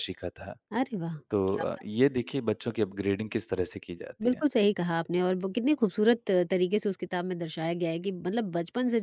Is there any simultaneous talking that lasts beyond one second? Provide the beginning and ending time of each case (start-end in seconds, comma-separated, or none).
none